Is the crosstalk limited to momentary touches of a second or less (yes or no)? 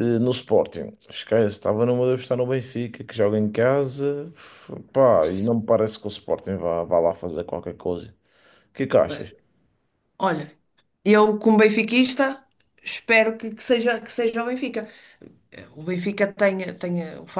yes